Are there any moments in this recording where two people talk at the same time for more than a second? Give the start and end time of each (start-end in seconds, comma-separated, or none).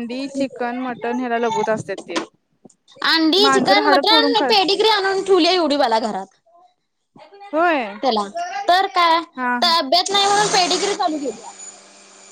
none